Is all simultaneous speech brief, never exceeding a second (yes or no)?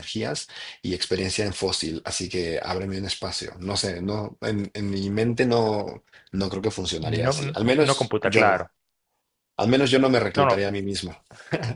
no